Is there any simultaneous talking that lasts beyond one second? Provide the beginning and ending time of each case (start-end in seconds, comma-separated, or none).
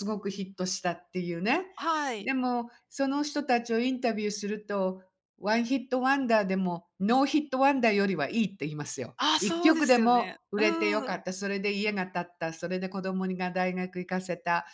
9.2-11.2